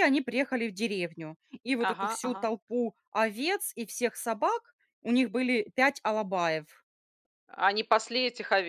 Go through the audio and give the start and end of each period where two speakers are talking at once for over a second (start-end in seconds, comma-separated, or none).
none